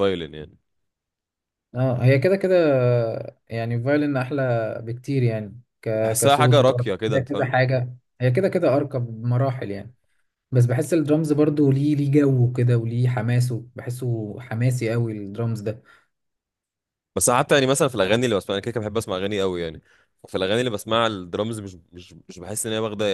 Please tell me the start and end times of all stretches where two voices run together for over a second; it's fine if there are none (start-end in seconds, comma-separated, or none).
6.0-7.5